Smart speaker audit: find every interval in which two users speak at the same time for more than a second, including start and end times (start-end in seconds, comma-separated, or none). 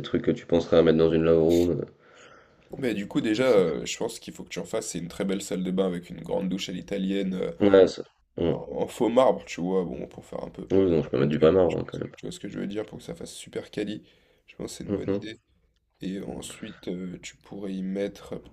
none